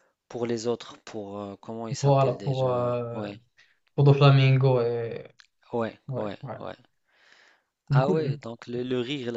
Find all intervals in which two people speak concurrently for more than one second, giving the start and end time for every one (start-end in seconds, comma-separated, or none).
2.0-3.3